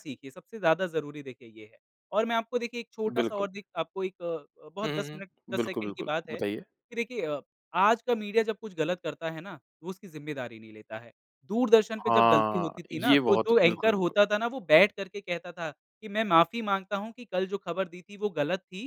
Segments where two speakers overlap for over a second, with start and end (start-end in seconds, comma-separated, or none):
4.8-6.6, 12.0-14.2